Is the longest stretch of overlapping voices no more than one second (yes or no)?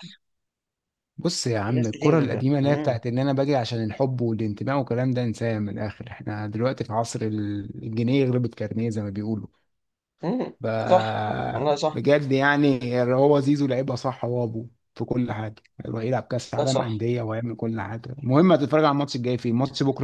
no